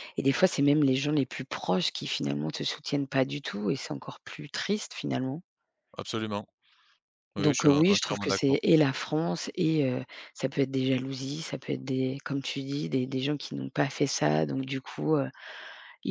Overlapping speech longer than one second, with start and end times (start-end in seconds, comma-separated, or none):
7.4-8.7